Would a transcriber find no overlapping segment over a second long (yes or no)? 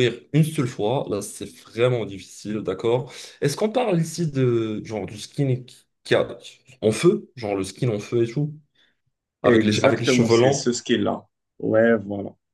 no